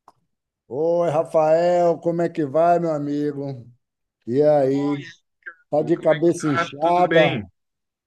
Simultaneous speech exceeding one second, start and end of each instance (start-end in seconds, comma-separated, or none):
5.8-7.3